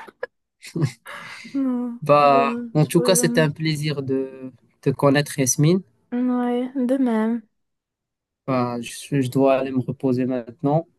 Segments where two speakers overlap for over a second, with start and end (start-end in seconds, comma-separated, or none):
2.0-3.5